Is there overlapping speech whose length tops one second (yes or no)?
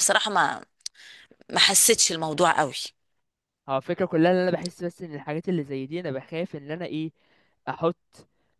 no